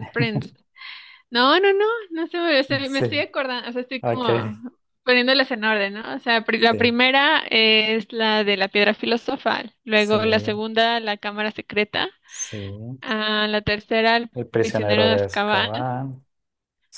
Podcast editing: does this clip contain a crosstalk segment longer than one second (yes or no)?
yes